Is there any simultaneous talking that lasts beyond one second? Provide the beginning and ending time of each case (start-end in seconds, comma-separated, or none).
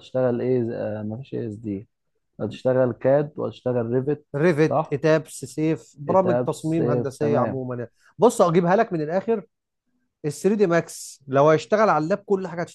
6.1-7.6